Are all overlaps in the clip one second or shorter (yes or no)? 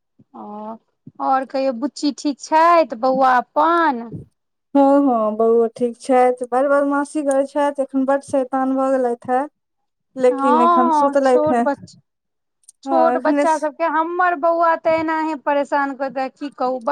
no